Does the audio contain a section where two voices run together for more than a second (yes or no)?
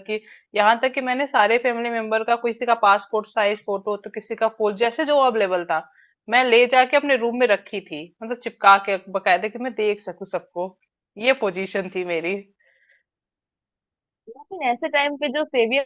no